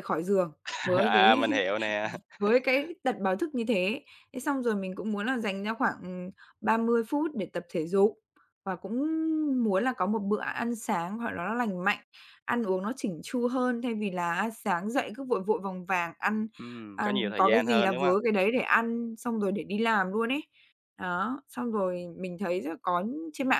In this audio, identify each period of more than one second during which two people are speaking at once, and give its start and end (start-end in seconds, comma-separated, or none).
16.9-18.1